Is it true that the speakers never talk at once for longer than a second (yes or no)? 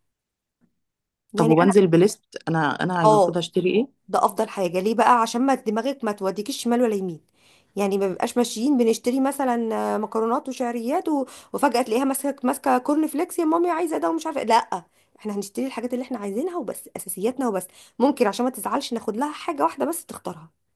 yes